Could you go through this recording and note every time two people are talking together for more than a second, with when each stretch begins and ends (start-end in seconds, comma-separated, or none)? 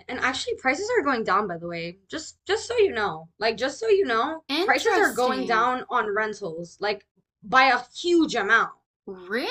4.5-5.7